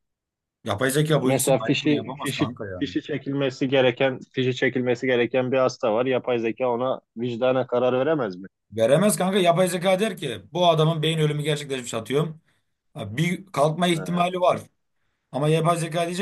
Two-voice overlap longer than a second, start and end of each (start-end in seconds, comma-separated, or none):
1.2-2.8